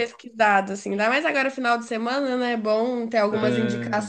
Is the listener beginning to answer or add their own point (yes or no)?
no